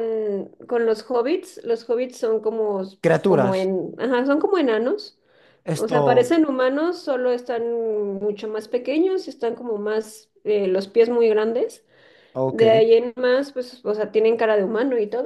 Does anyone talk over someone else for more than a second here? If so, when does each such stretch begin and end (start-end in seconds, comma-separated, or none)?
none